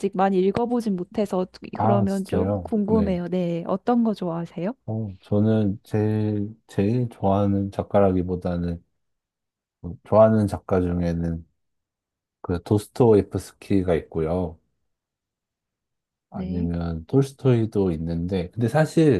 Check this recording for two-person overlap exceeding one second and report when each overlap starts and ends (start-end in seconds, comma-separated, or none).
1.7-3.2